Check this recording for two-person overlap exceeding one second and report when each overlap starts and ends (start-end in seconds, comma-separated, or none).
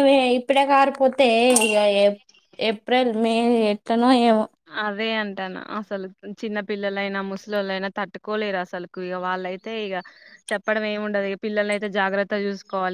none